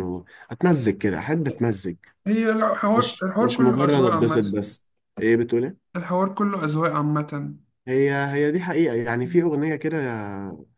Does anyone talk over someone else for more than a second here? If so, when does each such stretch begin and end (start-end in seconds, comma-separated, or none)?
2.9-4.5